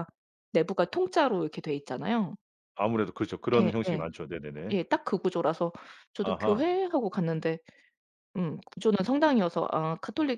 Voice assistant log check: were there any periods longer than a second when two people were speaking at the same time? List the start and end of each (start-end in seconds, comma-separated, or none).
none